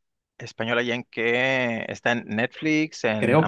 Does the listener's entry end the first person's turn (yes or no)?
yes